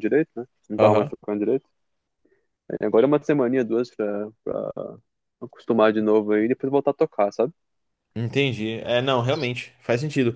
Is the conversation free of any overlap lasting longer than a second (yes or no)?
yes